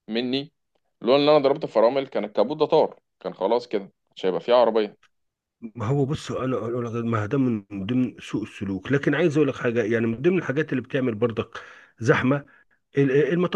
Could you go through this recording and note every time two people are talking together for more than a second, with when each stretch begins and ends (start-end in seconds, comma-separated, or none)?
none